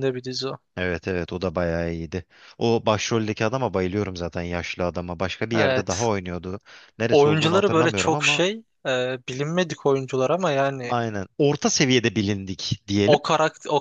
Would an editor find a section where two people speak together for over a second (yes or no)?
yes